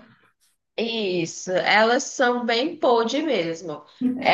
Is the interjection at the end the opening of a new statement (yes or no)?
no